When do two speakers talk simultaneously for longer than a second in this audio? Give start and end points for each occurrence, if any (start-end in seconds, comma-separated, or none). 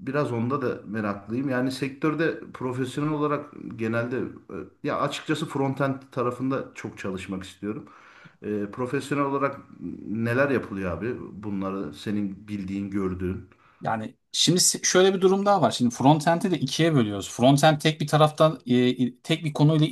none